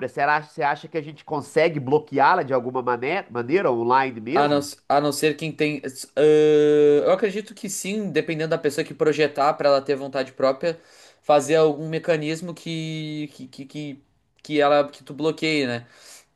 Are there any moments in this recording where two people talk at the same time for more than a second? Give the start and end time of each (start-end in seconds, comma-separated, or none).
none